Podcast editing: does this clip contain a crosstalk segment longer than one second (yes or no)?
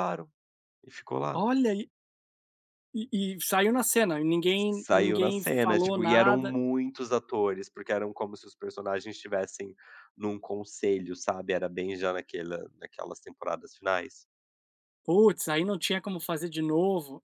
yes